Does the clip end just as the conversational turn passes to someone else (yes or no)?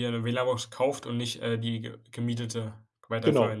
yes